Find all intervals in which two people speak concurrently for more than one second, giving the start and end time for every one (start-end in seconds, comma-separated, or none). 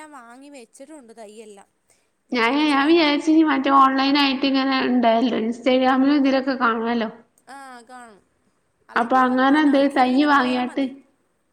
9.0-10.8